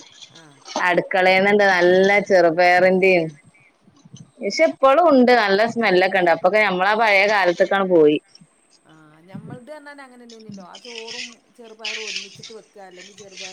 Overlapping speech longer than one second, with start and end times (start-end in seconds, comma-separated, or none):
none